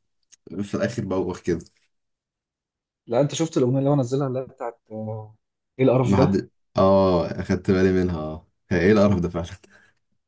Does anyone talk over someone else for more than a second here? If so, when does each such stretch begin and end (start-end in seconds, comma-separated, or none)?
none